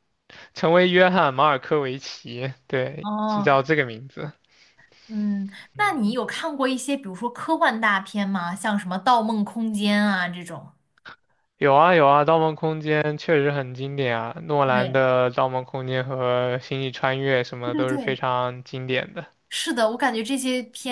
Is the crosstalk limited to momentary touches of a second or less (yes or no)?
yes